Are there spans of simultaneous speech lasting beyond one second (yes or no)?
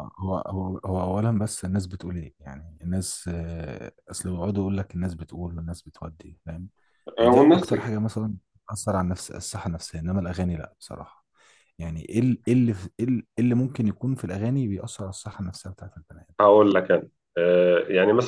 no